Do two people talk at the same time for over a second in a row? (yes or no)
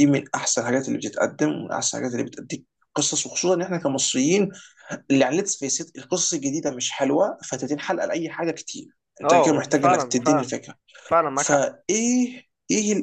yes